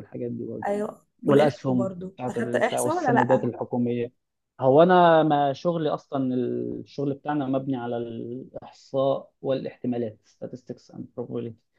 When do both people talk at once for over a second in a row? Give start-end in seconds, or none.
1.2-3.5